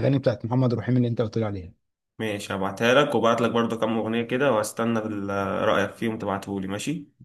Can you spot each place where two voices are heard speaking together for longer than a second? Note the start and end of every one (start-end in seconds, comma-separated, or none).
none